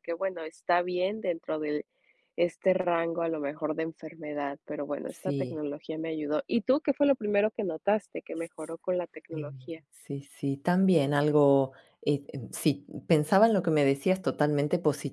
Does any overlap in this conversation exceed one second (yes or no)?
no